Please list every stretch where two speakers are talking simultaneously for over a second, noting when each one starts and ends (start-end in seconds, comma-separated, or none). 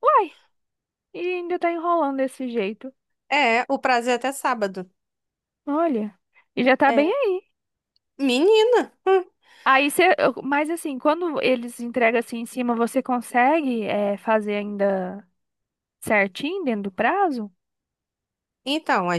none